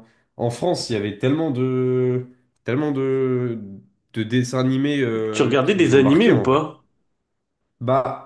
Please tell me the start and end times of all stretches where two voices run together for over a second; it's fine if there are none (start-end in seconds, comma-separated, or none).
5.3-6.7